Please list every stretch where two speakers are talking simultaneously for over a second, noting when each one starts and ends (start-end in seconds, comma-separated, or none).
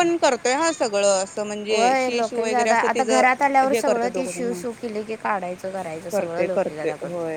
1.7-4.6